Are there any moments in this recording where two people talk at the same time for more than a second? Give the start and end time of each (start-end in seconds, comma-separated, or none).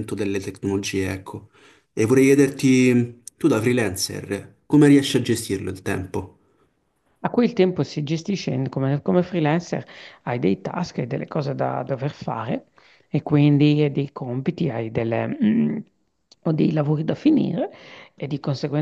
none